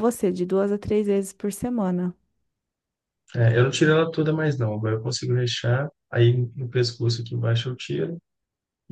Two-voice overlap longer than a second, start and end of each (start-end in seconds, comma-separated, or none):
none